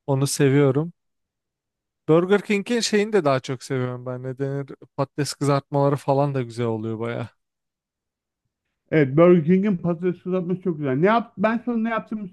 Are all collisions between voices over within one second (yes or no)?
yes